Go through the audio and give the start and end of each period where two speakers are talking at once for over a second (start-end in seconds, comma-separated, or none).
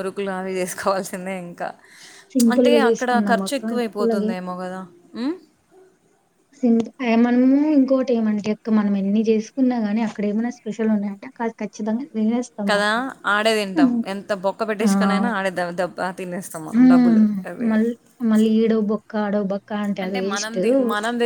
2.4-4.3